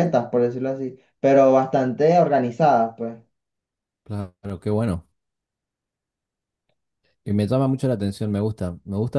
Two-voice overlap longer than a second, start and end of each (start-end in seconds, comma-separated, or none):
none